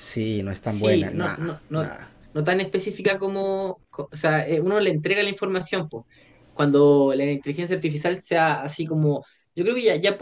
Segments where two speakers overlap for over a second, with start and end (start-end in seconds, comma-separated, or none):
0.6-1.9